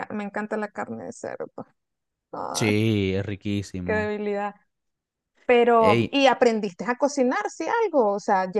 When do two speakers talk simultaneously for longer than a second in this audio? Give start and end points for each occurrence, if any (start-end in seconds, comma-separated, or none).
none